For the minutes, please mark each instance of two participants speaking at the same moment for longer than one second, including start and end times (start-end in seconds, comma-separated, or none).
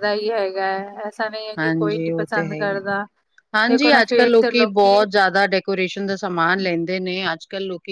3.7-5.0